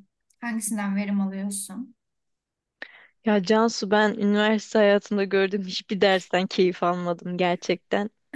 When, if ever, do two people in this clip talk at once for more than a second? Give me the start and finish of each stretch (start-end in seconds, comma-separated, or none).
none